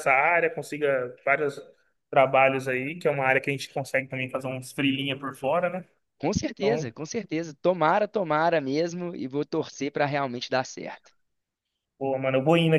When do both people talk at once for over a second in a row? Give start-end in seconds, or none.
none